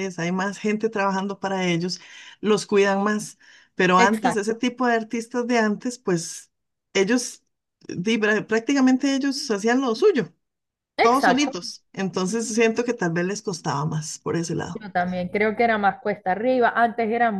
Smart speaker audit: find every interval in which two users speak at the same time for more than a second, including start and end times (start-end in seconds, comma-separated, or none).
none